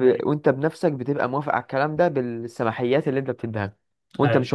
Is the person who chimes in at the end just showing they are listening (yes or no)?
yes